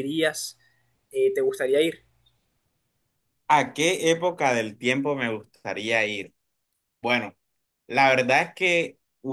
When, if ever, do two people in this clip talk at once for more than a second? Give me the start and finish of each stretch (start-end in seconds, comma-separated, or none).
none